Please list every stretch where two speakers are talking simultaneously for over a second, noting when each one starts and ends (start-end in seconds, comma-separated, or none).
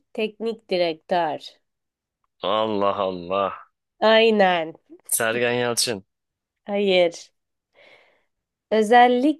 none